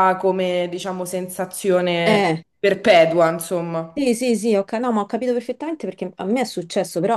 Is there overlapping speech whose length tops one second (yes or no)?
no